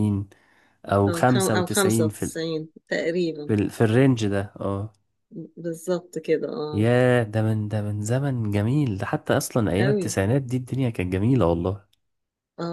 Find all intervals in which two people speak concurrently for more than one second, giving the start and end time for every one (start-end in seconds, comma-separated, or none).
1.1-2.3